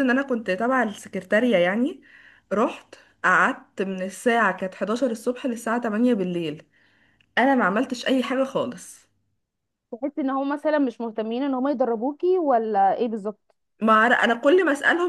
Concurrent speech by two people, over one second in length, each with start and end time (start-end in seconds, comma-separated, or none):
none